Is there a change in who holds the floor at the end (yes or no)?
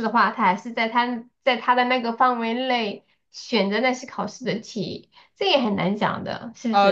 yes